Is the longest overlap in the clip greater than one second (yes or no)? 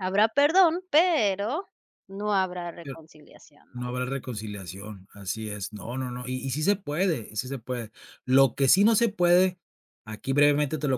no